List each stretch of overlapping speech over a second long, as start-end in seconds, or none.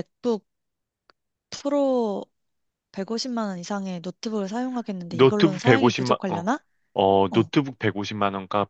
5.1-6.5